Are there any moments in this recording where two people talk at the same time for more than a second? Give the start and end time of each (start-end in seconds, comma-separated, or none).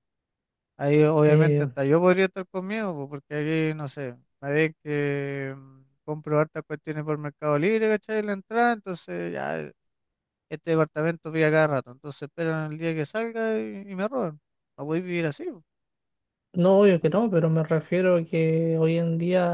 none